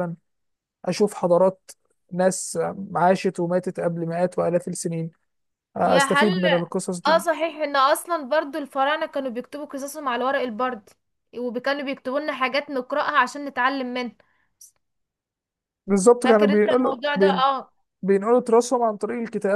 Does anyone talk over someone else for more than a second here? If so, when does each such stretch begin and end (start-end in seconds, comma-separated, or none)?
16.2-17.4